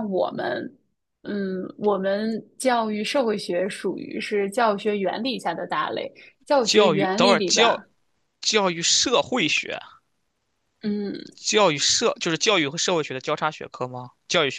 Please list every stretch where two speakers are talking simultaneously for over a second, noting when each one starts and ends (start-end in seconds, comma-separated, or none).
6.6-7.8